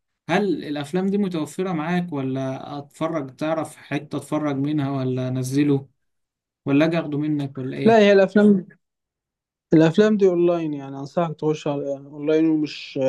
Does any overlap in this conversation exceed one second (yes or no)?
no